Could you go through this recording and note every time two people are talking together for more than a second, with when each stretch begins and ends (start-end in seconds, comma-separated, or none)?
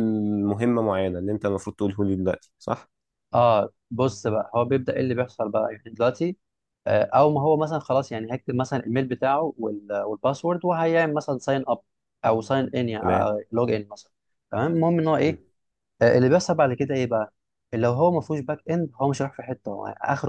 none